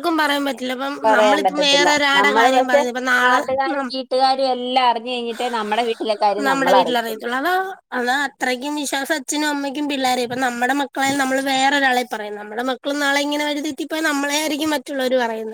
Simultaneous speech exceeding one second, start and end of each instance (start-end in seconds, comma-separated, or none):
1.1-2.8